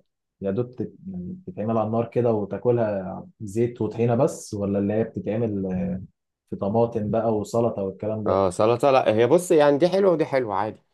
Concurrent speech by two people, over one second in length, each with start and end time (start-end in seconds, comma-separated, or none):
none